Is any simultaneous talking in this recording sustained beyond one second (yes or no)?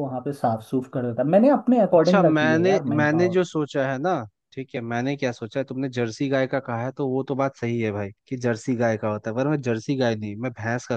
yes